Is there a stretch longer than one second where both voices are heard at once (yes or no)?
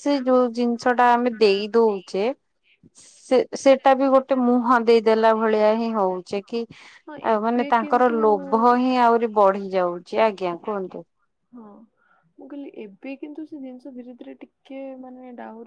yes